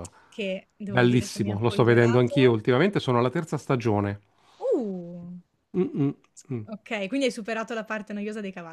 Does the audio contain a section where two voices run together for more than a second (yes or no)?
yes